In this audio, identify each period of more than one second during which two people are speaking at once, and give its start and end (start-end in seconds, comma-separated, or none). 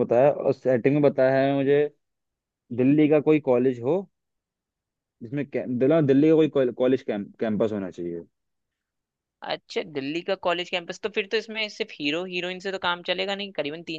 none